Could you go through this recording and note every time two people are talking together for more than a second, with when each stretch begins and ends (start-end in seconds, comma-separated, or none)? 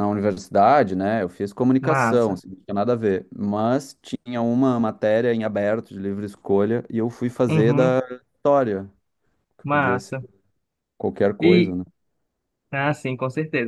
none